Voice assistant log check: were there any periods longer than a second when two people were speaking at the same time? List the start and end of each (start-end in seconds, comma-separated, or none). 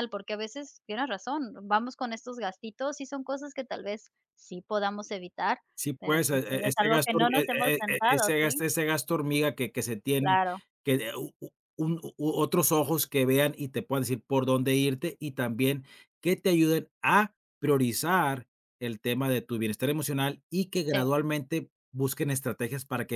6.0-8.6